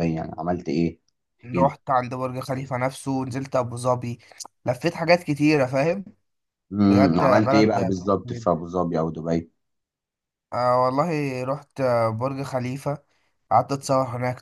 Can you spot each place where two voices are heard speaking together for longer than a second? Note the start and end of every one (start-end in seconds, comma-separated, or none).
6.9-8.5